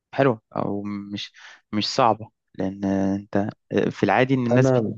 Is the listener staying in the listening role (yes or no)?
yes